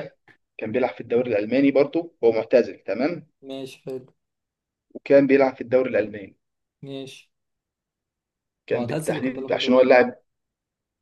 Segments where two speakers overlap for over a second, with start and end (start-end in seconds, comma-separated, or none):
8.7-10.0